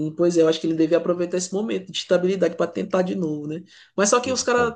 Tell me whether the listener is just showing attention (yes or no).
yes